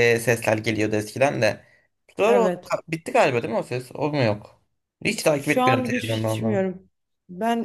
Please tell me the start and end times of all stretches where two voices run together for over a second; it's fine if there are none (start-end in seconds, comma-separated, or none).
5.2-6.7